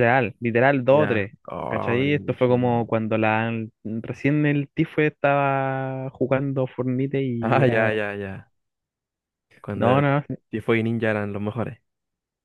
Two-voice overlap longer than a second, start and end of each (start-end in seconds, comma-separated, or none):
0.9-2.7